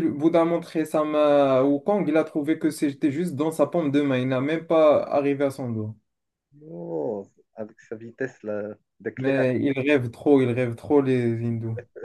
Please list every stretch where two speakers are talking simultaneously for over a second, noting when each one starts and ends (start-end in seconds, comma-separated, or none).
none